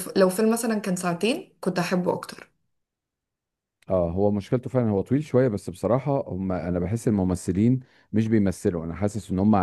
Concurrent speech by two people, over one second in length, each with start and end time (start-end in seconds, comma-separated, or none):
none